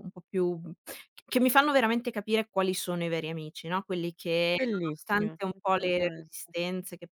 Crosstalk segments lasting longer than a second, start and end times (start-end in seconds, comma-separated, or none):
4.5-6.3